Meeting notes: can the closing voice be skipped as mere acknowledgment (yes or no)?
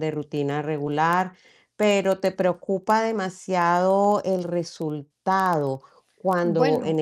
yes